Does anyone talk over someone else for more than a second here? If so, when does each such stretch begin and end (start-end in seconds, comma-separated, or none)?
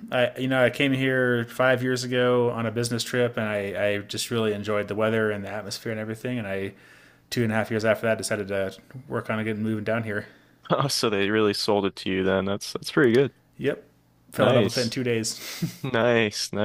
none